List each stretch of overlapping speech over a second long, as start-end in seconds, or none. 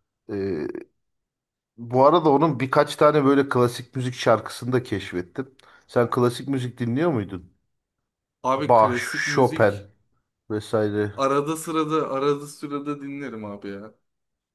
8.6-9.9